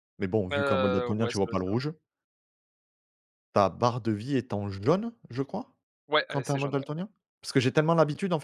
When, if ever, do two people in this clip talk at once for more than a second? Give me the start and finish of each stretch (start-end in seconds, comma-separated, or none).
0.5-1.8